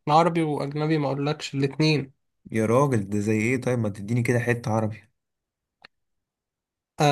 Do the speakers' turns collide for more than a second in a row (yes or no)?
no